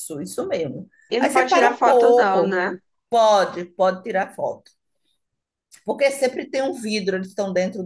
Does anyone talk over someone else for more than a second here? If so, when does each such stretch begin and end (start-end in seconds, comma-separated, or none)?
1.1-2.6